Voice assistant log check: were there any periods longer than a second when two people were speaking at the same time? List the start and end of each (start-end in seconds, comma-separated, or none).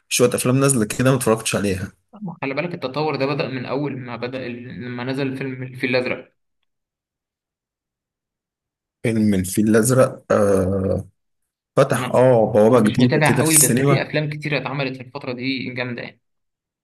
12.7-14.1